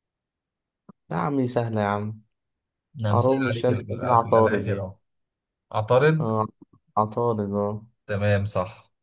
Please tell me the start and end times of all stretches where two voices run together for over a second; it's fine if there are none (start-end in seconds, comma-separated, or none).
3.1-4.9